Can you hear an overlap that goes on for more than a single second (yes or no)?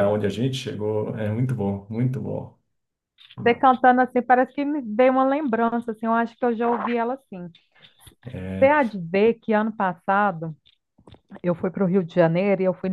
no